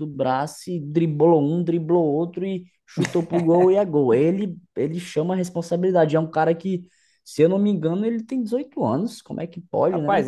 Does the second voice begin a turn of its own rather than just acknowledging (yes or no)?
yes